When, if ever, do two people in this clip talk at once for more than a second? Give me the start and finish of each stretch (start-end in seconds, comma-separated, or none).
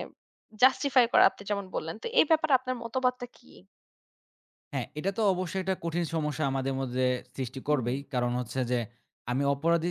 none